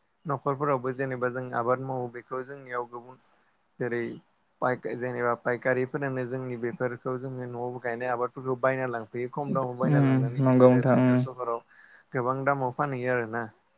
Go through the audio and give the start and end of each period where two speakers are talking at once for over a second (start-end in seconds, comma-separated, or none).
9.7-11.4